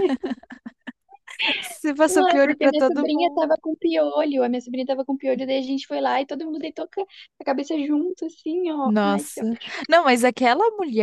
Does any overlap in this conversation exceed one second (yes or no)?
yes